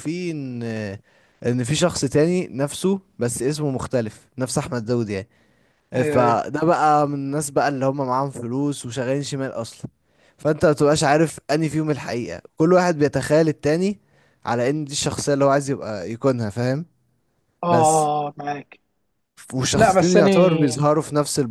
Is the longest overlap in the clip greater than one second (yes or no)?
no